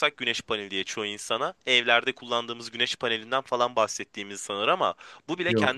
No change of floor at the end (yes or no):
yes